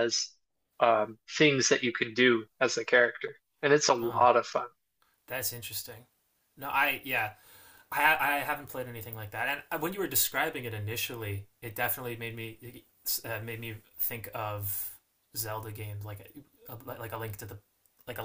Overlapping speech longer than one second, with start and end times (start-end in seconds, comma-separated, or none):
none